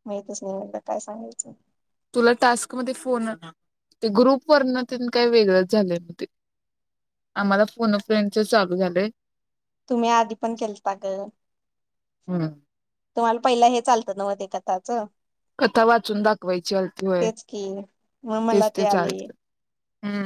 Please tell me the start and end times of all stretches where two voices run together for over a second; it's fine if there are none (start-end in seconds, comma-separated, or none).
none